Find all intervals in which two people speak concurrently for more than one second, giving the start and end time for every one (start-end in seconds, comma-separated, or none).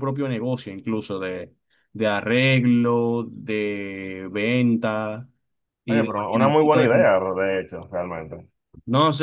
5.9-7.1